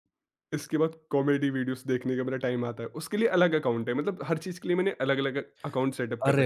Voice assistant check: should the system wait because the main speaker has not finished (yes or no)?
no